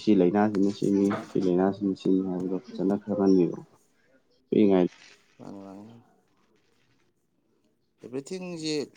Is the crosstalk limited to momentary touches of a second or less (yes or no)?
yes